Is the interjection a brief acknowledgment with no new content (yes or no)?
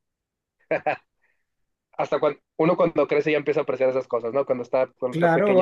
no